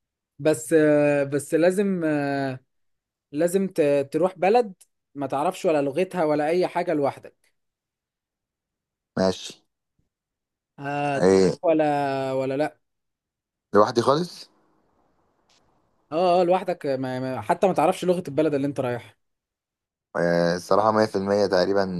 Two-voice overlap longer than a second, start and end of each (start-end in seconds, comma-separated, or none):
none